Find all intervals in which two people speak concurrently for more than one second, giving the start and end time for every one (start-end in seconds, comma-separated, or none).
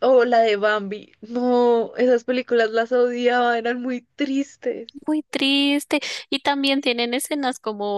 none